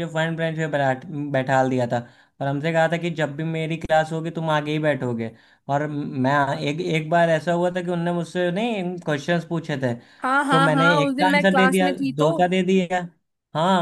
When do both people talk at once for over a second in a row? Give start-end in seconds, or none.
10.5-12.3